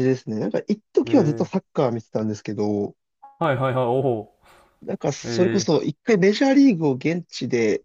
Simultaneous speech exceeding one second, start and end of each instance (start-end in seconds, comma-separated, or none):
none